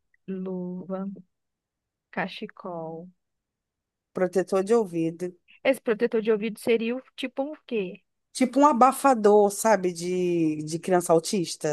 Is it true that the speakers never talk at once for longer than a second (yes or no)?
yes